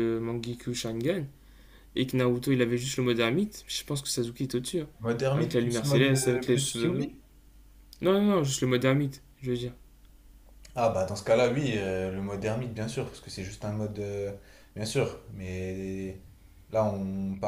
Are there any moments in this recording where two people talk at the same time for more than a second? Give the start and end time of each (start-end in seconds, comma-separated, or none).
5.3-7.1